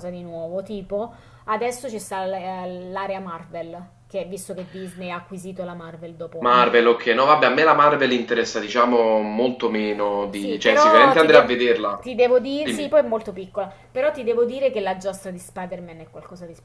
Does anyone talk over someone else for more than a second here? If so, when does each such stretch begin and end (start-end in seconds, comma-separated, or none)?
10.3-11.5